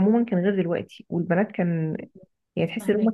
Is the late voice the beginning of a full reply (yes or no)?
no